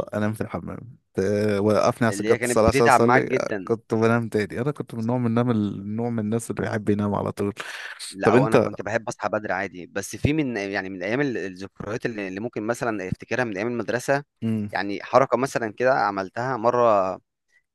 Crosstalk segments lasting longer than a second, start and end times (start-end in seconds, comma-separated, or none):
2.1-3.7